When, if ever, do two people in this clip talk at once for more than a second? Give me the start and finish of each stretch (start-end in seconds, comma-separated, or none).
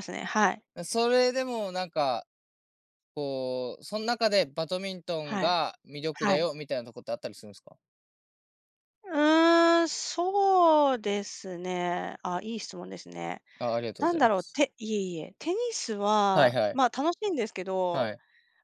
none